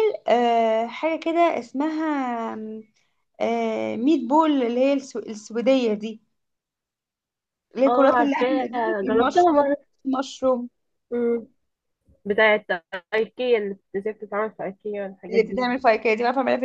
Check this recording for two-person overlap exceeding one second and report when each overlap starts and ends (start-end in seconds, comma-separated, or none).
7.9-9.8